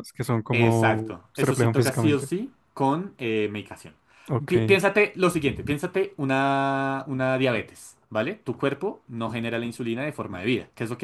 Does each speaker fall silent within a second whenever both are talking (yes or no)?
no